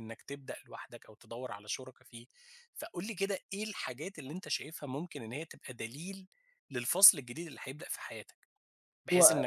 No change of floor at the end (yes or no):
yes